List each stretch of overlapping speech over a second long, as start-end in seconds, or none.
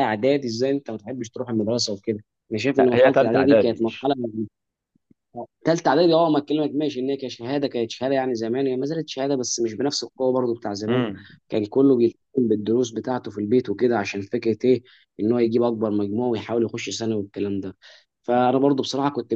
2.8-4.1